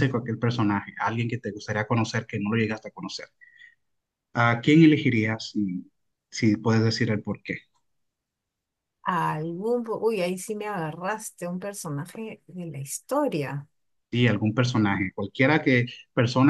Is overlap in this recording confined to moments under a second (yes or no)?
yes